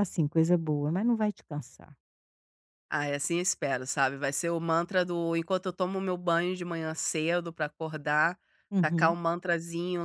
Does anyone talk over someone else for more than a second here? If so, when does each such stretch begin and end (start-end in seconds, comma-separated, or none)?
none